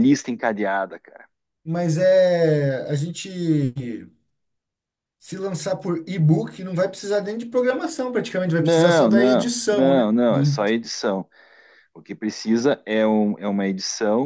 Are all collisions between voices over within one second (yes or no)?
no